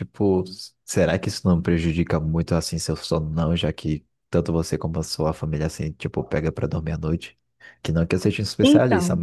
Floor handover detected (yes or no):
no